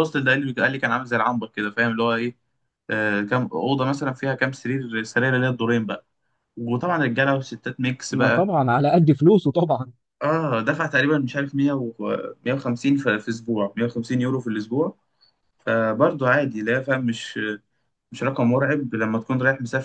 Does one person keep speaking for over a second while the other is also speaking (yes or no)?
no